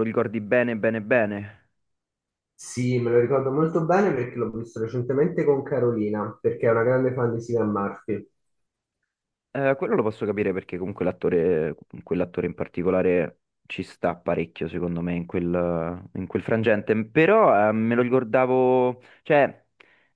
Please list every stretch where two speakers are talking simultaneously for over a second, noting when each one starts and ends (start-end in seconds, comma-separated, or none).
none